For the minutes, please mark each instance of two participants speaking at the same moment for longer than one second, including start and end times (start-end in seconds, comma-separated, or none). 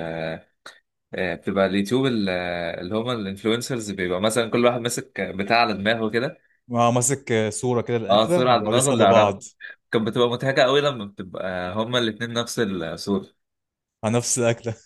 8.1-9.4